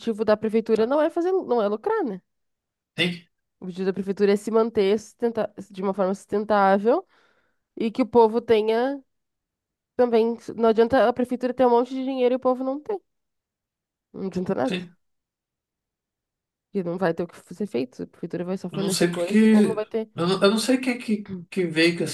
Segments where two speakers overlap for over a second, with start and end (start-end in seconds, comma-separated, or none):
18.7-20.1